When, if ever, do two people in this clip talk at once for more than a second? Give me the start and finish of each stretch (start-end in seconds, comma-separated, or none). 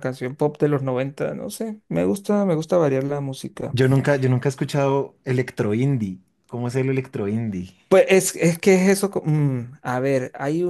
none